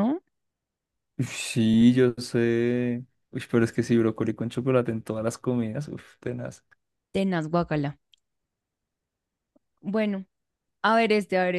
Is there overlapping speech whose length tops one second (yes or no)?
no